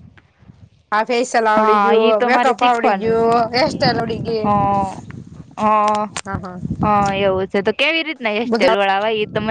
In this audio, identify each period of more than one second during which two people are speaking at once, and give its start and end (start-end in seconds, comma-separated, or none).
1.6-3.2